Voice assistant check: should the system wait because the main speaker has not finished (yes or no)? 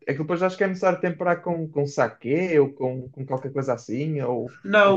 no